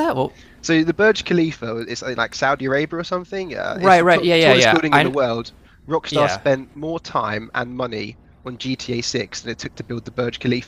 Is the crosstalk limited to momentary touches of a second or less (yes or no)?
no